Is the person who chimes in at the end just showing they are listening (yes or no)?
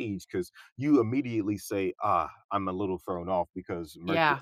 yes